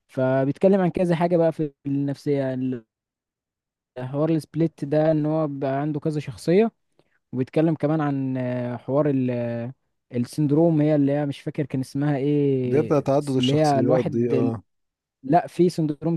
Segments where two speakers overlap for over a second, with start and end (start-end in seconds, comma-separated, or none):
12.7-14.5